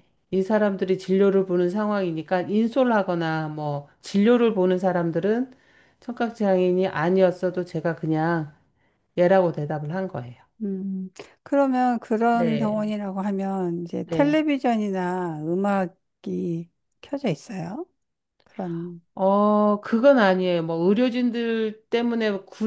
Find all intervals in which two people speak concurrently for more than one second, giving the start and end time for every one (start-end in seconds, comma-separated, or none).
none